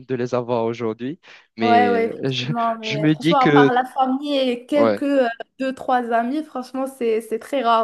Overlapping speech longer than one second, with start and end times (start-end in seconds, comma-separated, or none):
1.6-3.7